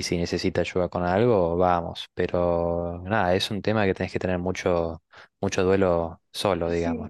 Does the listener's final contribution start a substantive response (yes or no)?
yes